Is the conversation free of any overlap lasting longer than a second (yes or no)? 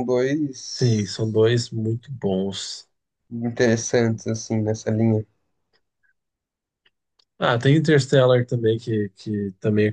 yes